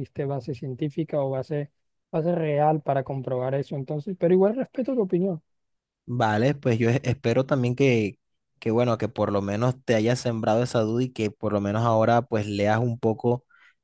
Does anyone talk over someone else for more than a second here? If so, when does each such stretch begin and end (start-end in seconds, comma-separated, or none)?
none